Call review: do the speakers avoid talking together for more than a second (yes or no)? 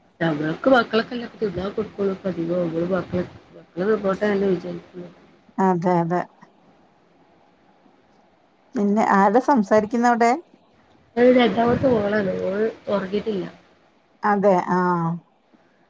yes